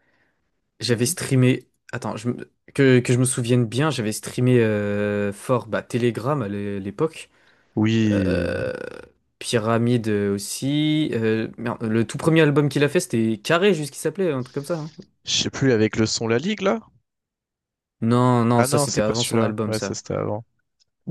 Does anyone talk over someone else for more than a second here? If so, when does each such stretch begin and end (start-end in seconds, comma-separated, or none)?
18.6-20.0